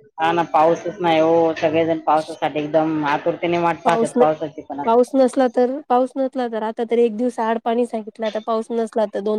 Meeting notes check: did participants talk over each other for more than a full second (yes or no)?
no